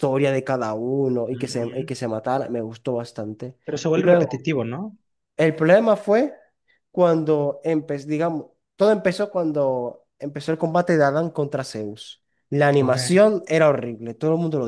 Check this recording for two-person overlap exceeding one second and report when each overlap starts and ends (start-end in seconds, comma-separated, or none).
none